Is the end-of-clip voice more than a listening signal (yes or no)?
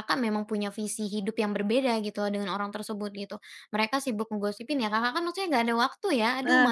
no